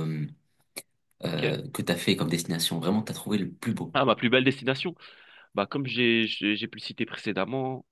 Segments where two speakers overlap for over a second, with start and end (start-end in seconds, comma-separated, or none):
none